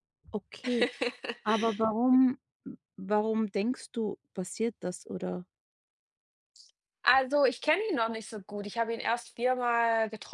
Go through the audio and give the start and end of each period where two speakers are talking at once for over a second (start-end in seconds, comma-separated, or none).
none